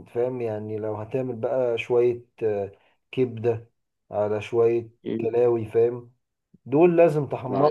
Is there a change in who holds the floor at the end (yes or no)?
no